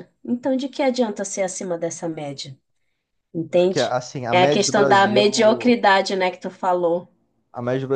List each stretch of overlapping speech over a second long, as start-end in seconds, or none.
3.5-5.8